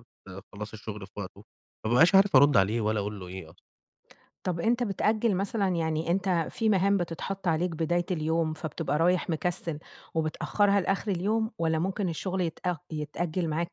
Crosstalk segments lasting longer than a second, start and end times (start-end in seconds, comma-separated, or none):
none